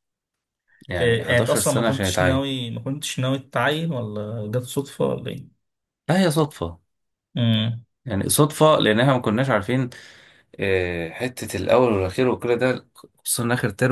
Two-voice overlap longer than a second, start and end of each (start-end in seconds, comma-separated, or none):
1.0-2.4